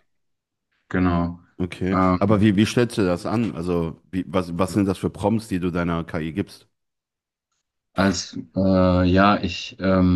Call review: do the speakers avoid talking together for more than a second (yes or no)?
yes